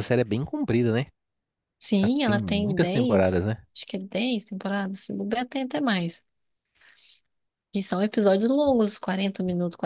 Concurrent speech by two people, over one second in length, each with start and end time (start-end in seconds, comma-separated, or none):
2.0-3.6